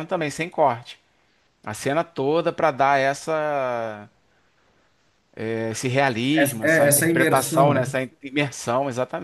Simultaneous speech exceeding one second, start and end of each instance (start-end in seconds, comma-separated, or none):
6.3-7.8